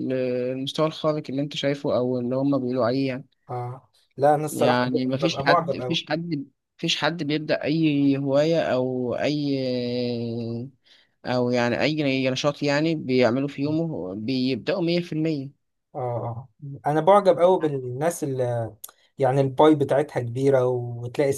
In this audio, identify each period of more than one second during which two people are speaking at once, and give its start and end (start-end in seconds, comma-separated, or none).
4.5-6.0